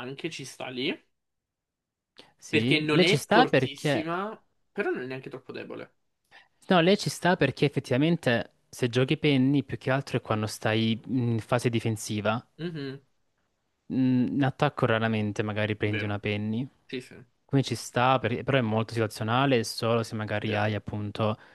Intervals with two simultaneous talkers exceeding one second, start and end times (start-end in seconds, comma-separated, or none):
2.5-4.1